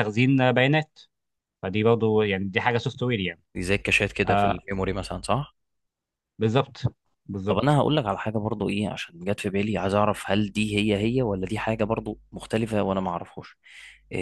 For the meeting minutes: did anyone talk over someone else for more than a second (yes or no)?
no